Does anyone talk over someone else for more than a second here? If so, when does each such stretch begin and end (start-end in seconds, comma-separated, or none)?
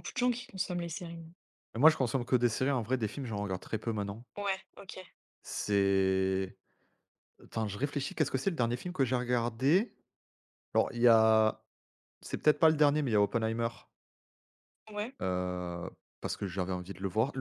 none